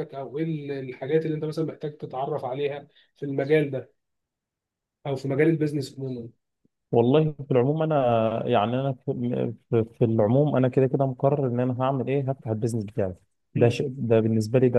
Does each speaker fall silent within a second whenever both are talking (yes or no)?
yes